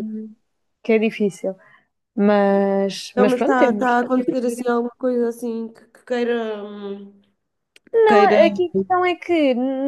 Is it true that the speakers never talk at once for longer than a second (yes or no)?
no